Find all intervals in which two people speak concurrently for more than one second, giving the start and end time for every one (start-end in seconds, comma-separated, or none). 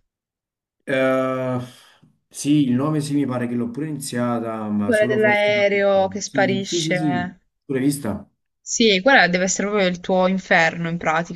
4.8-7.4